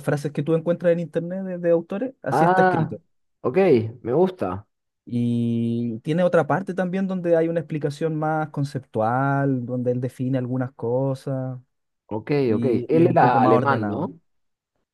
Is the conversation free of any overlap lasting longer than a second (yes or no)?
no